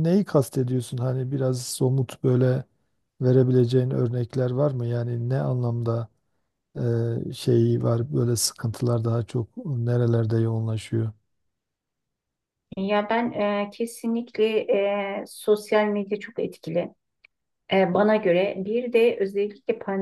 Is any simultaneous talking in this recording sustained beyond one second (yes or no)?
no